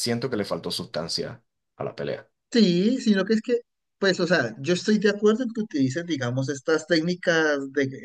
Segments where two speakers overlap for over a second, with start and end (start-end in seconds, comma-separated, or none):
none